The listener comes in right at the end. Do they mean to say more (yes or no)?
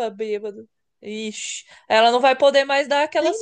no